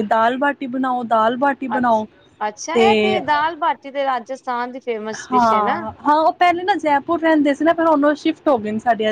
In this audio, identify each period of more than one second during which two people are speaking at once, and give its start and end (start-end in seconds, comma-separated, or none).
none